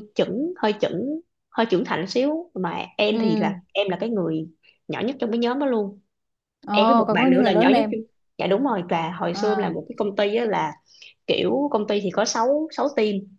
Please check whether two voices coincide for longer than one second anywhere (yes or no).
yes